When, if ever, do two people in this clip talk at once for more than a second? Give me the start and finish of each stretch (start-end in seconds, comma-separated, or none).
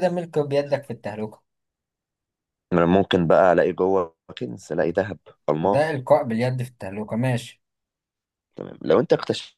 none